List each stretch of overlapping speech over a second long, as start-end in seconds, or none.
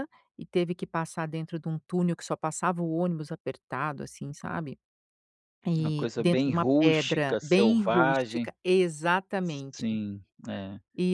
5.8-8.5